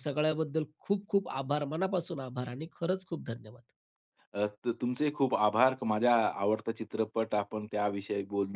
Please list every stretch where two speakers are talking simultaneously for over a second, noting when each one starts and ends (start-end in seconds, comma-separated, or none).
none